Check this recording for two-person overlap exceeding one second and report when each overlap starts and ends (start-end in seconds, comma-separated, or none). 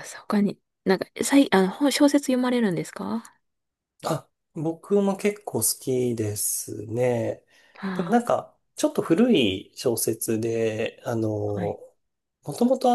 none